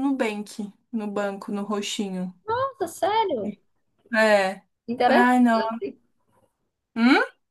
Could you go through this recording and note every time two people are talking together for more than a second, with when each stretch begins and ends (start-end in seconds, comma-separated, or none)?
none